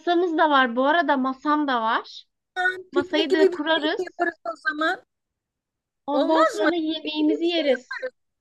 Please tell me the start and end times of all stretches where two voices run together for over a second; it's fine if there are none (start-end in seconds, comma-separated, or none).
2.9-4.2, 6.1-7.8